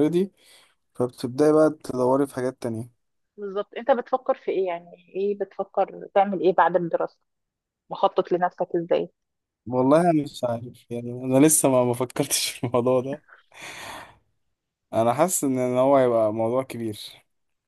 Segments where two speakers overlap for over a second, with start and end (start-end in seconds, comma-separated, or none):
none